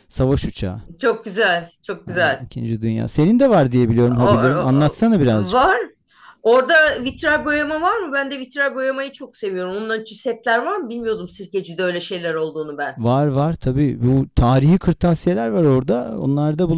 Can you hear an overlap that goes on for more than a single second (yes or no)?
yes